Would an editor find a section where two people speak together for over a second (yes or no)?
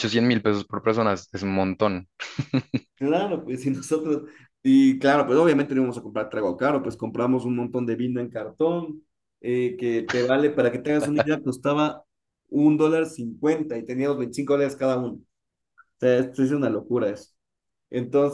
no